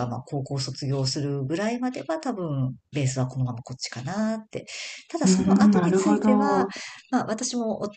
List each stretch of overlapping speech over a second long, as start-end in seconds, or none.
5.2-6.7